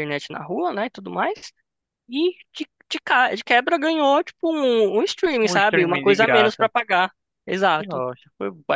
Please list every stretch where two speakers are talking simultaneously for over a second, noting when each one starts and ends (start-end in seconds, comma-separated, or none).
5.4-6.7